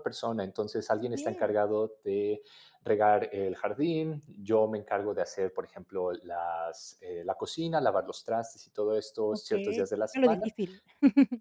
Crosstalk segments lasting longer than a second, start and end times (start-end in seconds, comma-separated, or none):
9.3-10.5